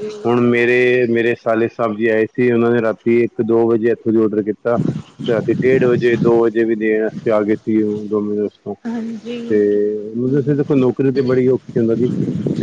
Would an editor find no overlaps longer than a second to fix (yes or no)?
yes